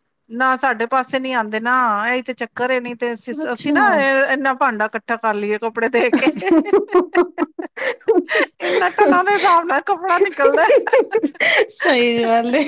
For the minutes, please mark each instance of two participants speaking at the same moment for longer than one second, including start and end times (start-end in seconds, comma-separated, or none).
none